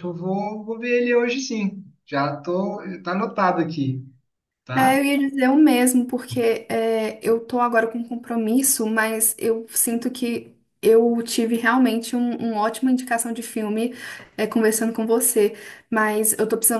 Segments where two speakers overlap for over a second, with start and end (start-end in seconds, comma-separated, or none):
none